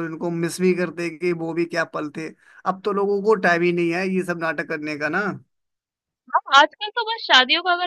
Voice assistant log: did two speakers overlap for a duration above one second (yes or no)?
no